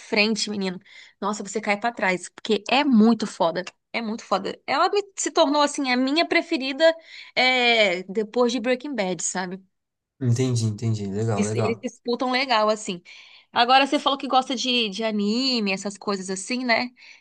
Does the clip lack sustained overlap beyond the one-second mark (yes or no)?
yes